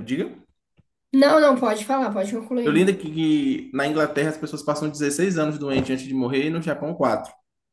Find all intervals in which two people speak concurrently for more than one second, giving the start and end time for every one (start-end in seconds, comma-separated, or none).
none